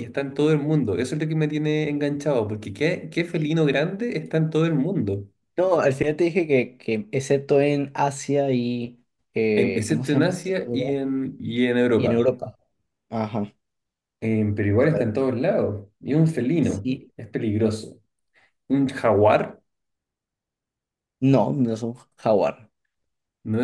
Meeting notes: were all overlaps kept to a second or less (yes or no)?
no